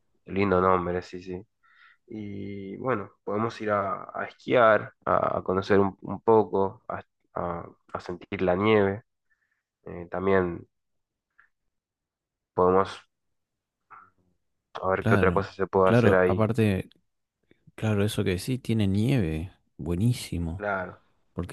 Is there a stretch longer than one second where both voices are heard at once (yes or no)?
yes